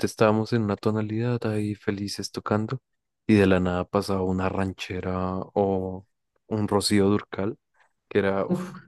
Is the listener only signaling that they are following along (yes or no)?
yes